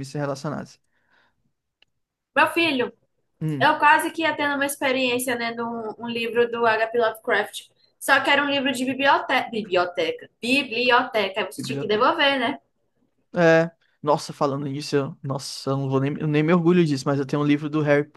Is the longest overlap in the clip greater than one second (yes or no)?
no